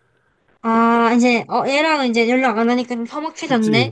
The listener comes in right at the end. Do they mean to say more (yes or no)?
yes